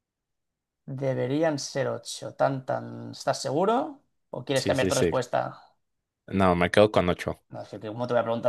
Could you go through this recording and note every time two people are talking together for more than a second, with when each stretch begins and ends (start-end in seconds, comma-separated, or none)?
none